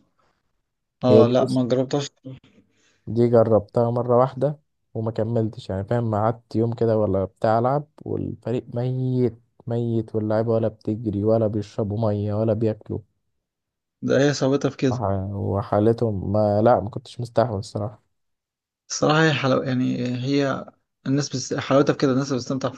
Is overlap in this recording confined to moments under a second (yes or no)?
yes